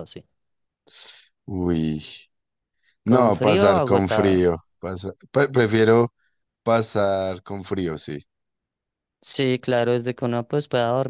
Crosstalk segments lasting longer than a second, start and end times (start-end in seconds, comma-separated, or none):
3.0-4.5